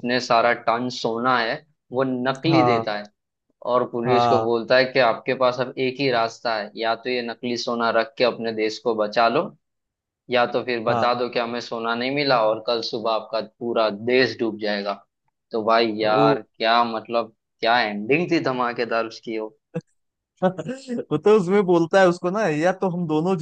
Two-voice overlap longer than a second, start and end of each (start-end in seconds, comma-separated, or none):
none